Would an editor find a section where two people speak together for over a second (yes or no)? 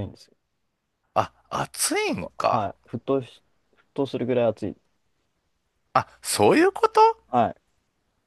no